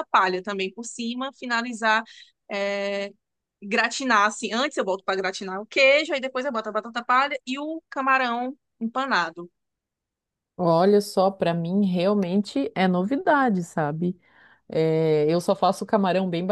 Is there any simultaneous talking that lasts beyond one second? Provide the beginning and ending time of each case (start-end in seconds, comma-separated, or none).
none